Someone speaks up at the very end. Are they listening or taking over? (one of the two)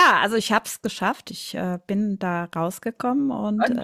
taking over